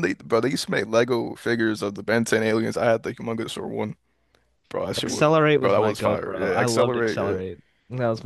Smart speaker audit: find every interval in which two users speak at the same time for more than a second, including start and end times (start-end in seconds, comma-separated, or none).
5.0-7.4